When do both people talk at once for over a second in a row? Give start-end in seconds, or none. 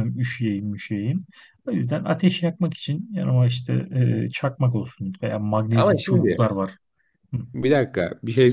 none